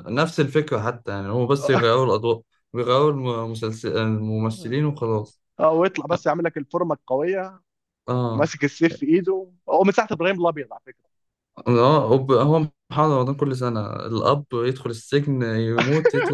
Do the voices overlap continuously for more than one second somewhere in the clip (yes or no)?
no